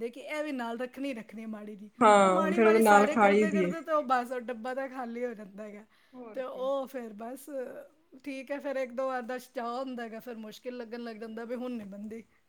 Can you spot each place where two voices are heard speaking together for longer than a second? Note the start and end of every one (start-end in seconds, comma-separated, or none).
2.0-3.7